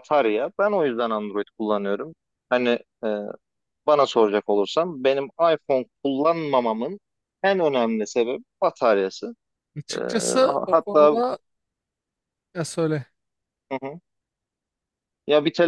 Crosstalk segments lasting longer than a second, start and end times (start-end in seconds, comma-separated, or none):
9.9-11.2